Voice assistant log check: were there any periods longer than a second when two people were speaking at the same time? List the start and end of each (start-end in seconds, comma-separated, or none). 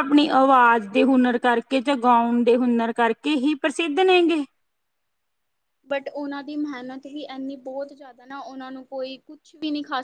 none